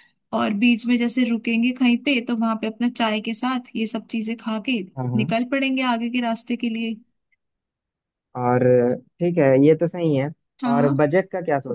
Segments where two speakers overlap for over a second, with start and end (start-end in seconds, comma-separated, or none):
none